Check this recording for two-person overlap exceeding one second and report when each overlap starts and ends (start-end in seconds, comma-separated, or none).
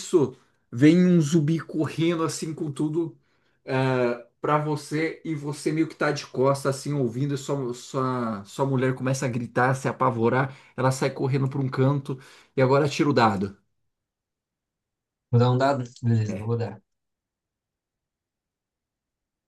none